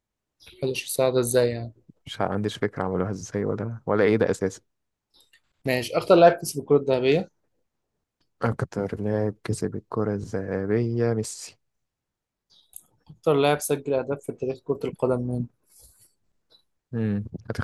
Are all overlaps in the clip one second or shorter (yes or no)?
yes